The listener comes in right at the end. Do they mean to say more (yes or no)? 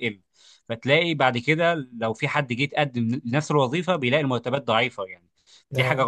no